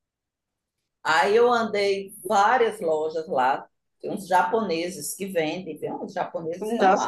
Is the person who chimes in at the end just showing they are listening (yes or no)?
no